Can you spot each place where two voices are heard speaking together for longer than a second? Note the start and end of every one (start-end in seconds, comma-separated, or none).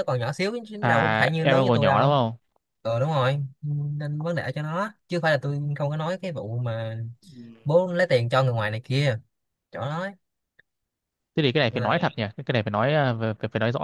0.8-2.1